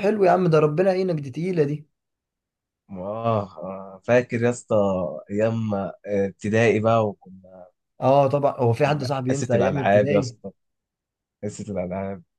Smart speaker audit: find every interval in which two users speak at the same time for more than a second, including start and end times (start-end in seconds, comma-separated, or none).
8.8-10.4